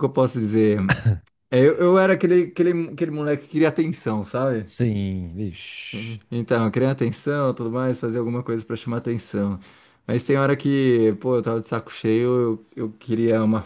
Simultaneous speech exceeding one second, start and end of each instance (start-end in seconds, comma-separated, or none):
none